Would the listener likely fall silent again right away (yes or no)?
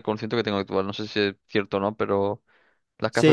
no